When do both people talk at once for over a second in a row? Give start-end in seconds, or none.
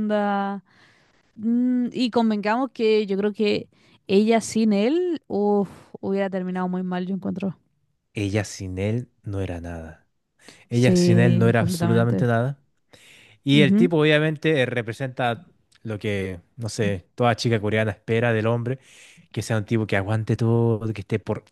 10.7-12.3